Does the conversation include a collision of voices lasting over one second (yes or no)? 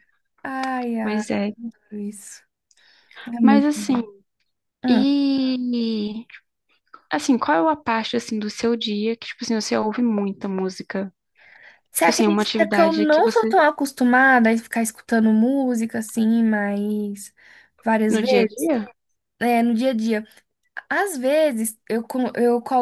yes